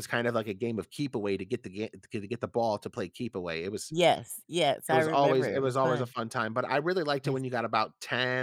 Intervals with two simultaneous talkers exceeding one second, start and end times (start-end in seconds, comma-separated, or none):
4.9-6.1